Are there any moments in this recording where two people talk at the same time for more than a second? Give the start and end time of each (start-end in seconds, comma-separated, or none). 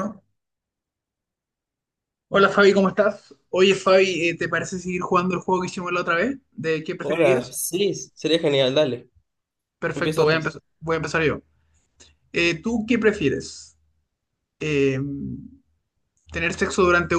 none